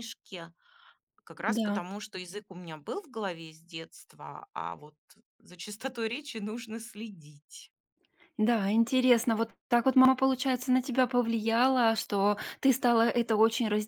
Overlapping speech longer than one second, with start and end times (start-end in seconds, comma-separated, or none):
none